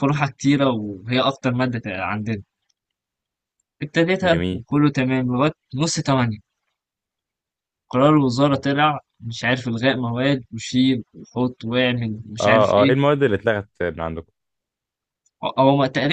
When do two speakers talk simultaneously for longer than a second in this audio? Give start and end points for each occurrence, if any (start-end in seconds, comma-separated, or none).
none